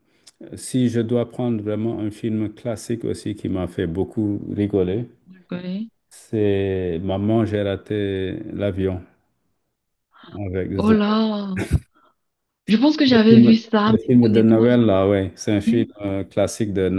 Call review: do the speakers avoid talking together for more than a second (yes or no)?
no